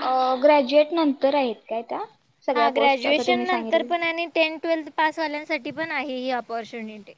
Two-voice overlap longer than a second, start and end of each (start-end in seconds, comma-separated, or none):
2.5-3.9